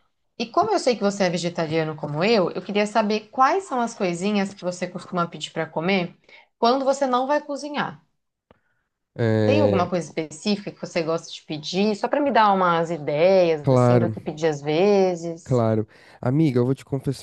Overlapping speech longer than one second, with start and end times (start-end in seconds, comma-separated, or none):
none